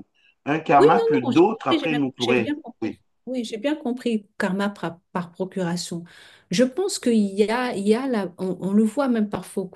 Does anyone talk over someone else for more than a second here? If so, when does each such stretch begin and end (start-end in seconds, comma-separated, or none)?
0.8-3.0